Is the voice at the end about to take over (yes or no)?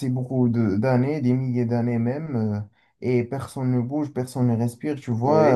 no